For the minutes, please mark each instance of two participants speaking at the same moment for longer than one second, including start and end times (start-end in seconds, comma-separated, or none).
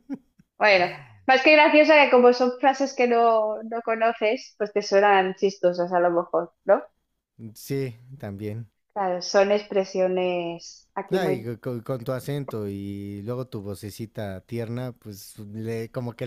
none